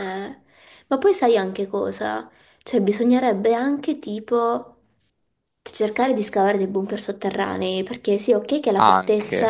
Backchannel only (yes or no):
yes